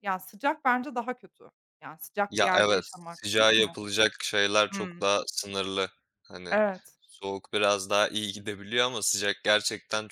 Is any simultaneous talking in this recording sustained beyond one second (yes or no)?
yes